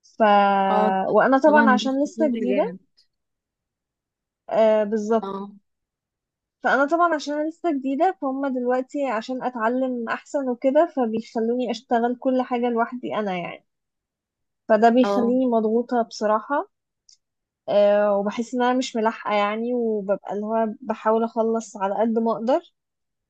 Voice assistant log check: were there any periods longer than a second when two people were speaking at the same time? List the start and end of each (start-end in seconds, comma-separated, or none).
1.5-2.8